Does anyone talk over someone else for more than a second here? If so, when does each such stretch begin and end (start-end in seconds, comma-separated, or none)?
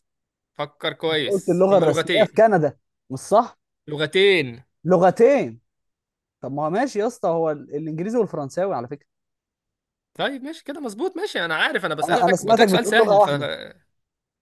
1.1-2.4, 12.0-13.3